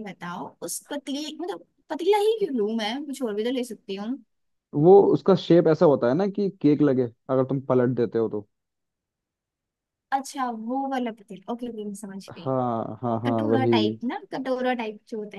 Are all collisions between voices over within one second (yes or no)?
yes